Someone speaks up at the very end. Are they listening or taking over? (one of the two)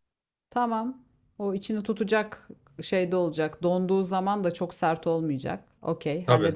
taking over